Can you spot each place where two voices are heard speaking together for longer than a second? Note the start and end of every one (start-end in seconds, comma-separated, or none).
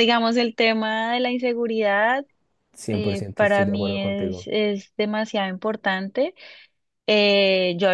2.9-4.5